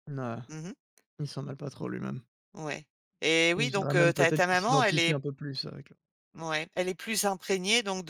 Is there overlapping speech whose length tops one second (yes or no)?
yes